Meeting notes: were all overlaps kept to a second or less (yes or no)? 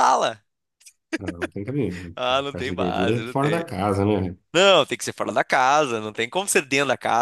no